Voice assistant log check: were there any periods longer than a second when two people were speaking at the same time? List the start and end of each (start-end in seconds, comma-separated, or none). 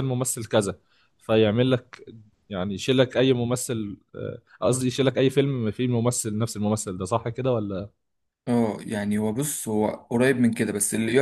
none